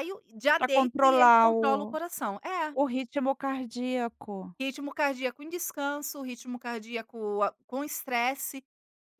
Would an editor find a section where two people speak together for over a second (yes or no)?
yes